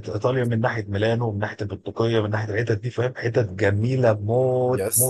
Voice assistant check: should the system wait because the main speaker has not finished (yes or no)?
no